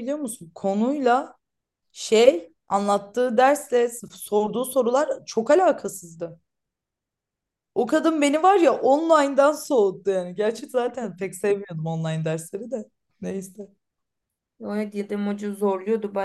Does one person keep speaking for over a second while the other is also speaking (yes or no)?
no